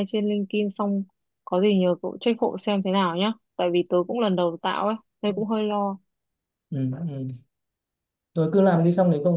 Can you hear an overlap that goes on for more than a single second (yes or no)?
no